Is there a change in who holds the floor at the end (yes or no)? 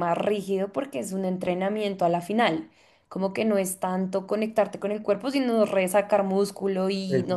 yes